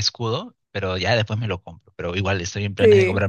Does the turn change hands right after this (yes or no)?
no